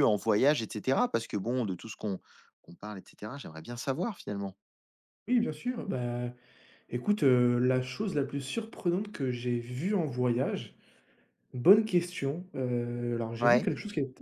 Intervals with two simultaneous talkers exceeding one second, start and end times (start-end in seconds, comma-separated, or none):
none